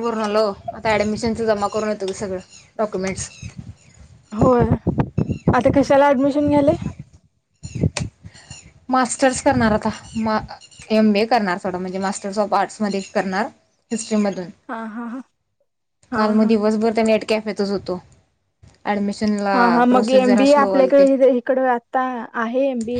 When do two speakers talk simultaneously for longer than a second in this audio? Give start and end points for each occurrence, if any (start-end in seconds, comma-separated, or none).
19.5-21.1